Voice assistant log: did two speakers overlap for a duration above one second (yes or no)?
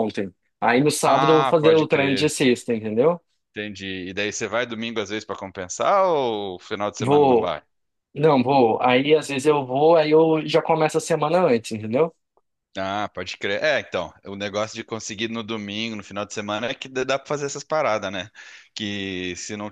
yes